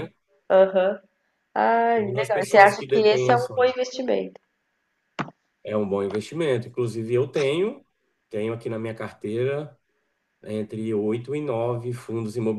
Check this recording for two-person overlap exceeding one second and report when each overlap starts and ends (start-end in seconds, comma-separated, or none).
1.9-3.7